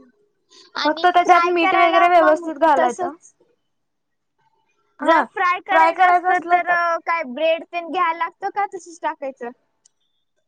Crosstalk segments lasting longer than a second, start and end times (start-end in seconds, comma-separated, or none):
0.8-3.1